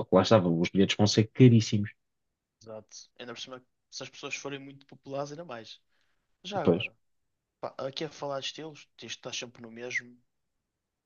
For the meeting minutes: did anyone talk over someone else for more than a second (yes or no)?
no